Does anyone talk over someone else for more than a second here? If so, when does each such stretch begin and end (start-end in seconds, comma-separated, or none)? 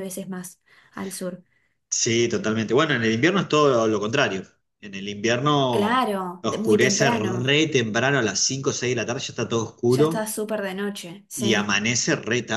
5.7-7.5